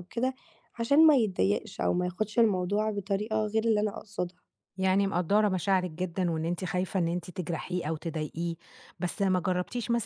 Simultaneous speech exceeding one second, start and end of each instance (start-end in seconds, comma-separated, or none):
none